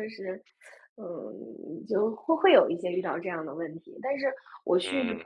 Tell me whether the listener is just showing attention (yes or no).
yes